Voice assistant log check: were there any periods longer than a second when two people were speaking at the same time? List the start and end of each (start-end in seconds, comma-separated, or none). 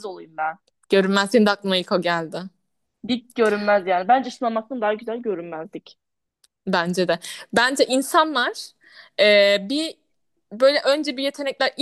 none